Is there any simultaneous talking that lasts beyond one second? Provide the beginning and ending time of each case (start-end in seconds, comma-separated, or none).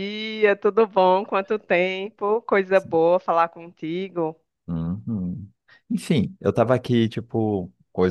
none